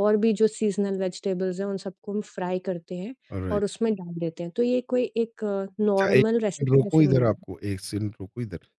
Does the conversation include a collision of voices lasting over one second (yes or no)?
yes